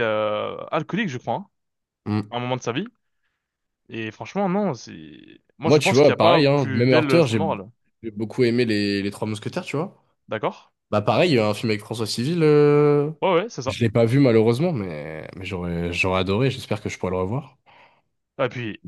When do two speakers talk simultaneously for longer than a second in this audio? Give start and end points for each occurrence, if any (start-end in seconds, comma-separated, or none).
5.7-7.4